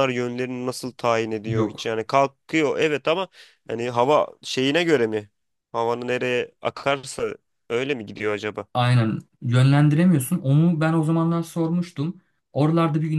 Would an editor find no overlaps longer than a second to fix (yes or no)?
yes